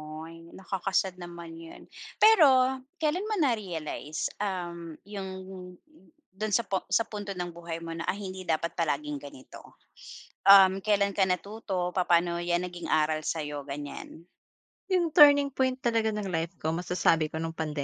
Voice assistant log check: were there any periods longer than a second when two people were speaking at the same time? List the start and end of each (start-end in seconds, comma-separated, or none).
none